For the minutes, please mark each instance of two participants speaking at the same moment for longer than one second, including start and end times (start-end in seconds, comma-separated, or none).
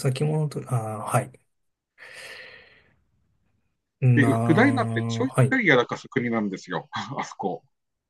4.1-5.6